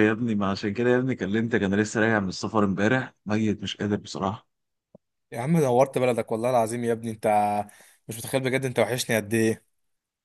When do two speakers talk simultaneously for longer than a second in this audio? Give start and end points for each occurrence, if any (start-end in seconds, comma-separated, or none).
none